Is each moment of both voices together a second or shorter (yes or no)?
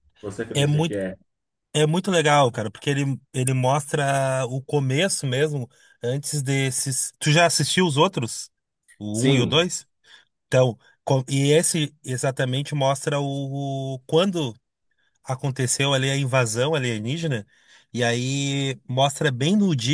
yes